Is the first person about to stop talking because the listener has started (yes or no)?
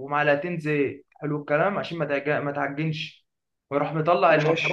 no